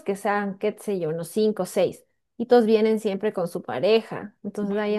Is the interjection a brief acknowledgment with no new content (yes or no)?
yes